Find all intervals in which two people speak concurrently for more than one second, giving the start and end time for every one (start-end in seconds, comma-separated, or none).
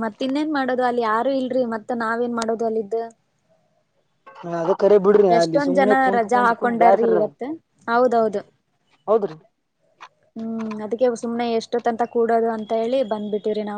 5.4-7.2